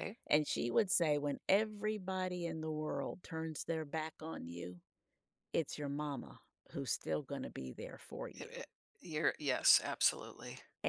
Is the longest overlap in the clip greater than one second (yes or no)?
no